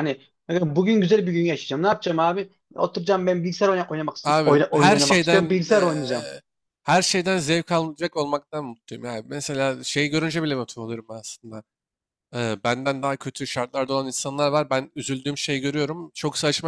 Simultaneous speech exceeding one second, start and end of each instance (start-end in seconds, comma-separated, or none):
4.2-6.0